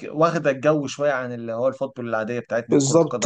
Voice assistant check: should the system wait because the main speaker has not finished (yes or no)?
no